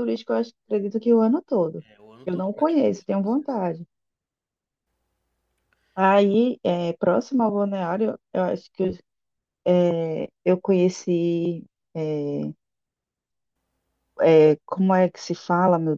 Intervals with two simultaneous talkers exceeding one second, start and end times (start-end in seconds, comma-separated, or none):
2.2-3.7